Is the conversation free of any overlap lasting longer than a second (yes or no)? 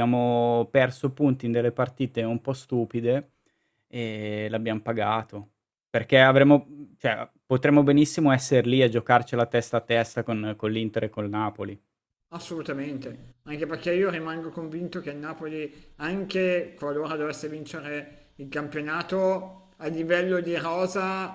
yes